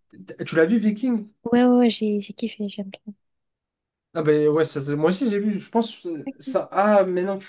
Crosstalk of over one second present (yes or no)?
no